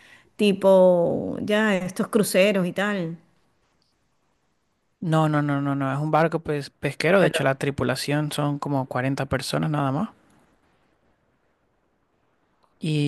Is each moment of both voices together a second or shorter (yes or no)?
yes